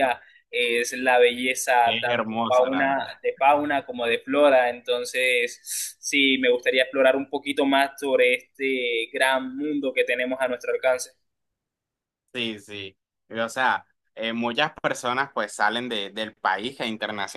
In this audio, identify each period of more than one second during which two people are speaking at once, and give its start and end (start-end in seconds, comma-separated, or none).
1.8-3.1